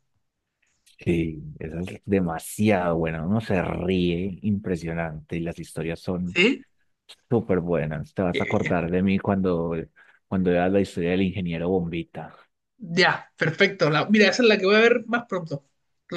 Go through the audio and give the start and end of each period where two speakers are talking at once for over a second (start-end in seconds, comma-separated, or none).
none